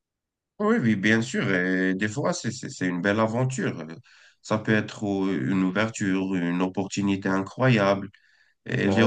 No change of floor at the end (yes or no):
yes